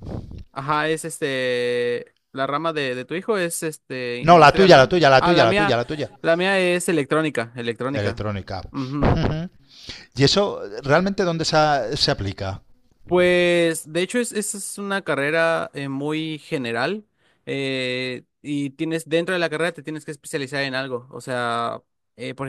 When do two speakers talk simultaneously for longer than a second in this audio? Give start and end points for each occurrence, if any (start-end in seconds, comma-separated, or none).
4.3-5.8